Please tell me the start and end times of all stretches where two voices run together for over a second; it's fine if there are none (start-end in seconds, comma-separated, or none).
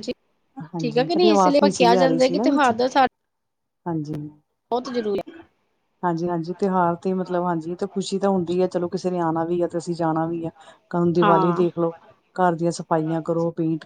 0.8-2.7